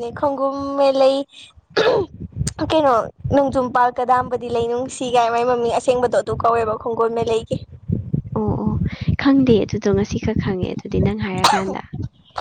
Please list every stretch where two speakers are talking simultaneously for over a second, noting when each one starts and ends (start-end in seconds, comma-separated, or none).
none